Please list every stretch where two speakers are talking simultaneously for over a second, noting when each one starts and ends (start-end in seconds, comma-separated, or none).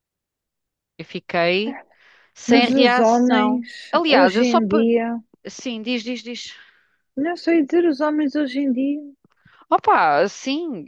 2.5-4.9